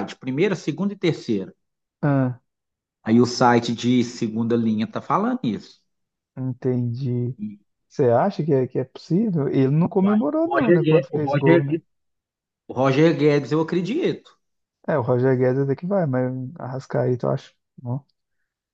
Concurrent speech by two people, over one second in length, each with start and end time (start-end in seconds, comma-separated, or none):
10.0-11.8